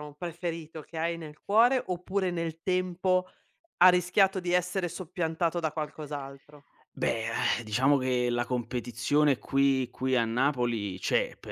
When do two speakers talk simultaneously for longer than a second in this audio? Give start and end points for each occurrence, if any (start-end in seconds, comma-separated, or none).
none